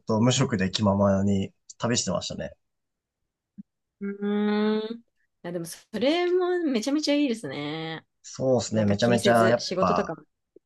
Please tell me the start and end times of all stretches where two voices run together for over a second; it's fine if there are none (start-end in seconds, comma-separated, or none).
8.7-10.1